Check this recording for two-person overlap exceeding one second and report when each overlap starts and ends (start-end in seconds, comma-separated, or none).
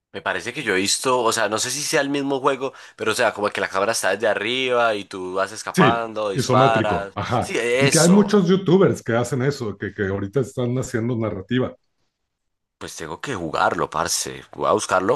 5.7-8.4